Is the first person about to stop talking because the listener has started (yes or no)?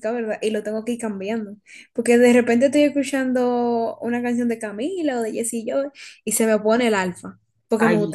yes